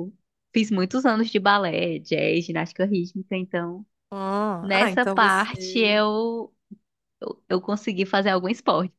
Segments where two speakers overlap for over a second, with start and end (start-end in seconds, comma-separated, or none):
4.6-6.0